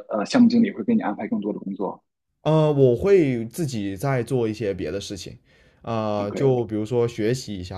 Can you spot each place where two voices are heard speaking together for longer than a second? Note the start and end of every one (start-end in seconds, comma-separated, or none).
none